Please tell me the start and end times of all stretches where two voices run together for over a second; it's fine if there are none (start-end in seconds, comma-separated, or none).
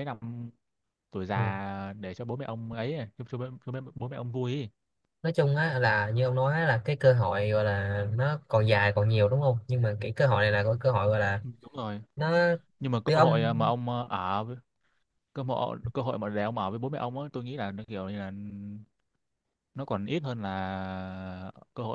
none